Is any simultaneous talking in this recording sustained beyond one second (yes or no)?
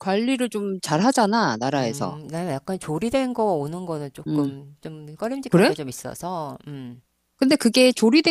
no